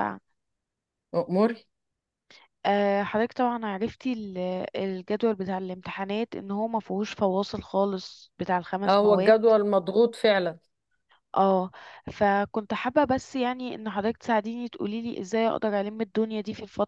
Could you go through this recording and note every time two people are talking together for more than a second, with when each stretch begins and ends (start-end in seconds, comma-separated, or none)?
none